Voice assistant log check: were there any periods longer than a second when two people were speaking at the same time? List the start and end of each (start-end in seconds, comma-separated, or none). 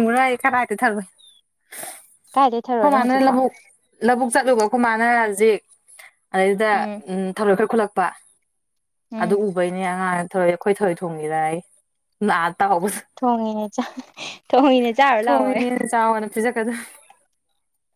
none